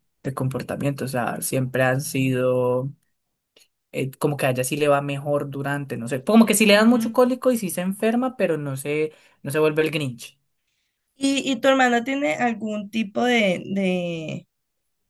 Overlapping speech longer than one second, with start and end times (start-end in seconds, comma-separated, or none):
none